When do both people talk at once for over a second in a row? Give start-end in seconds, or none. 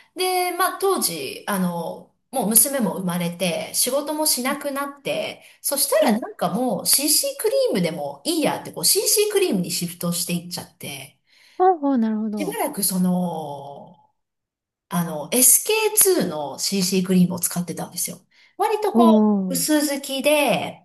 none